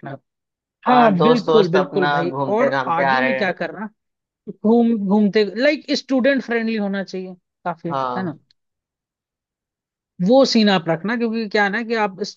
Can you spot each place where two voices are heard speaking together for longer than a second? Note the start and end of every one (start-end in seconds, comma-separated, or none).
0.9-3.5